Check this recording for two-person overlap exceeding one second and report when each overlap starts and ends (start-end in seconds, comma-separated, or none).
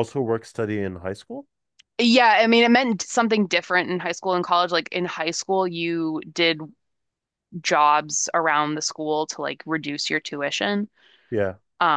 none